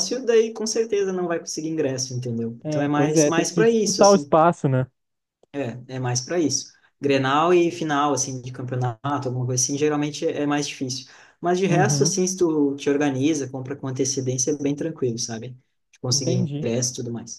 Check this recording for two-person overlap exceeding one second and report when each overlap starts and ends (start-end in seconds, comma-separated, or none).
2.6-4.3